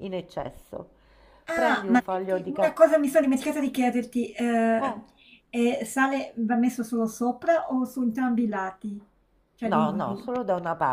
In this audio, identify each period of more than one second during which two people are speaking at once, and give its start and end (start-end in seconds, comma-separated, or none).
1.5-2.9